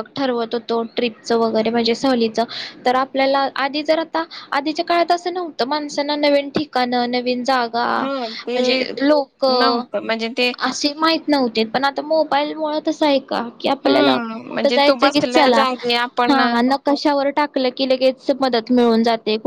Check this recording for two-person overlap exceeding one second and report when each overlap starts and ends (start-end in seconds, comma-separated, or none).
13.8-15.6